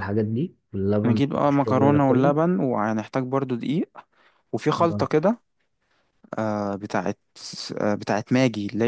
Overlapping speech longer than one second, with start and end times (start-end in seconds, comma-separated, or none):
1.0-2.4